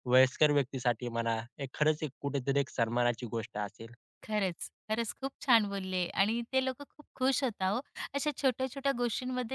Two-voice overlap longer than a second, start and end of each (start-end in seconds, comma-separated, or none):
none